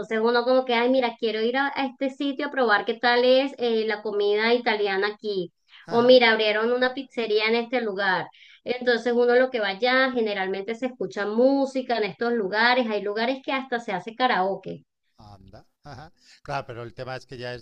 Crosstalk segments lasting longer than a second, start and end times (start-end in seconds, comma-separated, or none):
none